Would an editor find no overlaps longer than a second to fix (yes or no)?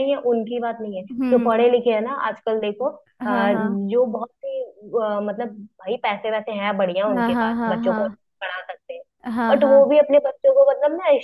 yes